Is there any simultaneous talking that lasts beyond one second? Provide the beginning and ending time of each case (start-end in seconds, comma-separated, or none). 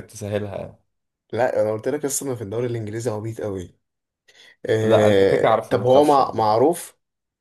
4.8-6.6